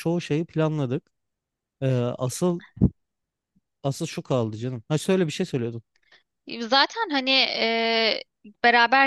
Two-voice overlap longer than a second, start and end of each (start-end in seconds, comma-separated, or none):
none